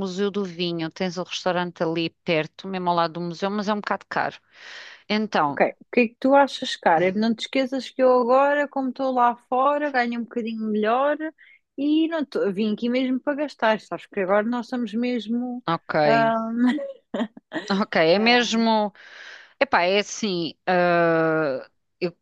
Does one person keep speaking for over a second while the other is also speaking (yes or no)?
no